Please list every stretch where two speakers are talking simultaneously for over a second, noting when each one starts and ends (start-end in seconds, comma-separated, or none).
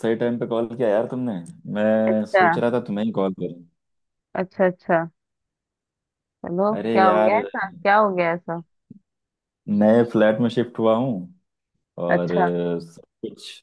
none